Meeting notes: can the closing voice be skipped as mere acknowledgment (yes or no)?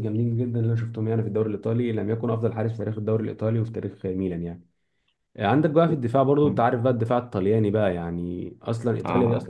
yes